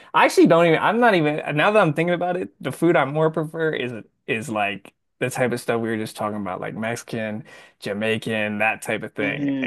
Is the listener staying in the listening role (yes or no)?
no